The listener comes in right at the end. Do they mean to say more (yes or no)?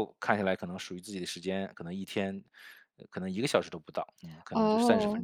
yes